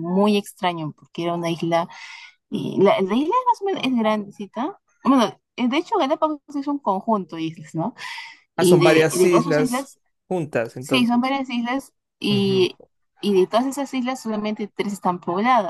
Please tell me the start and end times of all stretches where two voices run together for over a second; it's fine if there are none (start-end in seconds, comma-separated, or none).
8.6-9.9